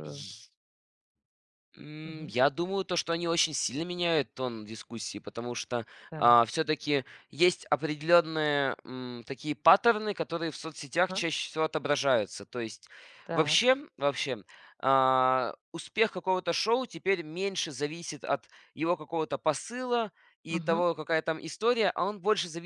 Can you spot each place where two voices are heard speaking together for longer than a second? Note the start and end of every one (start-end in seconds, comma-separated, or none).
none